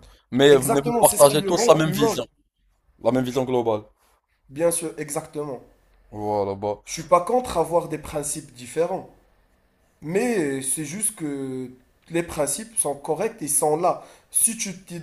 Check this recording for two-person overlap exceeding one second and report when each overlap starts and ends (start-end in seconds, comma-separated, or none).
0.5-2.2